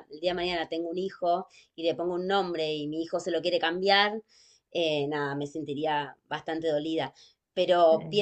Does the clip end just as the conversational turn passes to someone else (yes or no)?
no